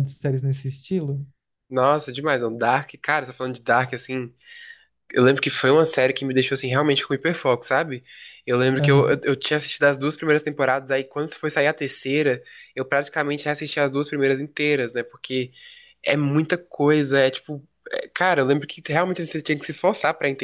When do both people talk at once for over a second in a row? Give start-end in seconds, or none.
none